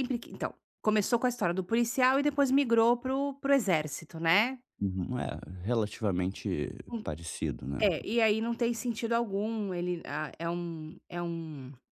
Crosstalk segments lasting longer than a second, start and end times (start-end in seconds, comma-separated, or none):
none